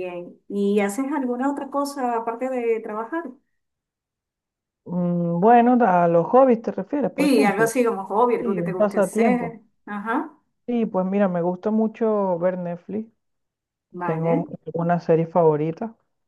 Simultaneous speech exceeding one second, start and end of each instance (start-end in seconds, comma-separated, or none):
8.4-9.6